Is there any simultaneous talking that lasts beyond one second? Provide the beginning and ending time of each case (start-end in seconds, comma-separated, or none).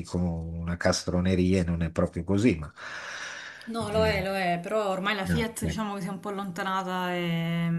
none